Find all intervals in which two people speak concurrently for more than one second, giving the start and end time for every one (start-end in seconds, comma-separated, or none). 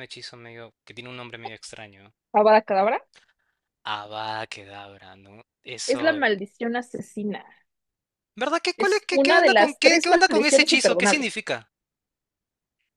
8.8-11.3